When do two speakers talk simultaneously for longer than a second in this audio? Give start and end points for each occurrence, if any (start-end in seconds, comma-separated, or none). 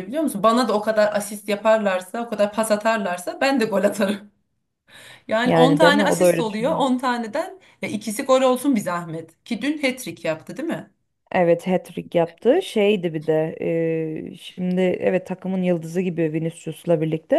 5.4-6.8